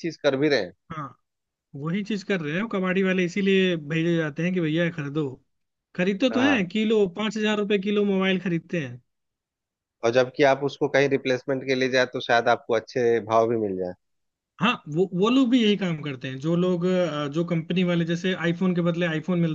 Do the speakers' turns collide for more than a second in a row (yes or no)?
no